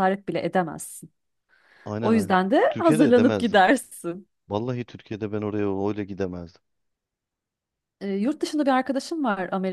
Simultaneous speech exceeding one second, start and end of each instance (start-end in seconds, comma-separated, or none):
2.0-3.6